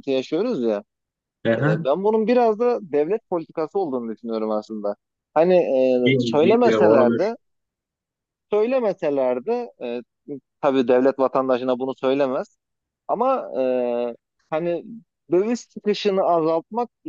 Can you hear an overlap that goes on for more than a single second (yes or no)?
yes